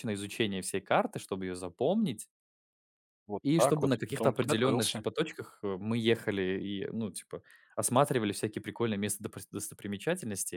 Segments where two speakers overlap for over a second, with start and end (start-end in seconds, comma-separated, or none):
3.4-5.0